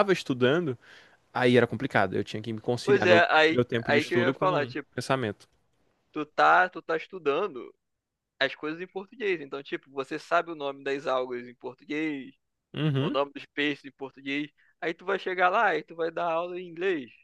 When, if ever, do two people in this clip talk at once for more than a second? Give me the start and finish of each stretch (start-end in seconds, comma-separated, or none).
2.8-4.9